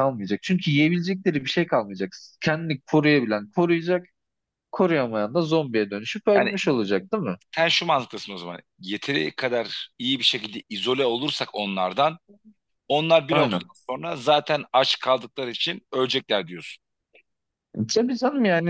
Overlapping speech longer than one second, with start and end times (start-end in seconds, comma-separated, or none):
none